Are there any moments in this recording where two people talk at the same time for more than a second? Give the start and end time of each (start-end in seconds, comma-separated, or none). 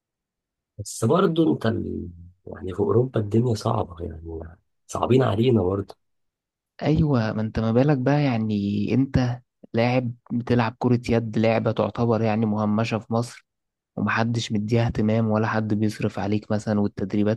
none